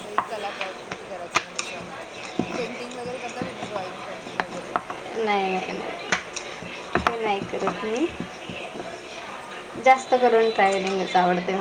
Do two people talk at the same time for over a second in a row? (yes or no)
no